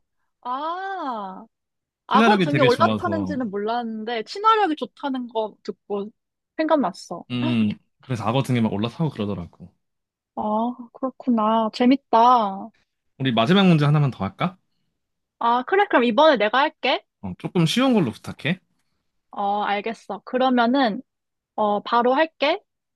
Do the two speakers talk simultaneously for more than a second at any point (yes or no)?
yes